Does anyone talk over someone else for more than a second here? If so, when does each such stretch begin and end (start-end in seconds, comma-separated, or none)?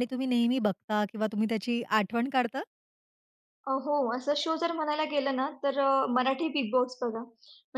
none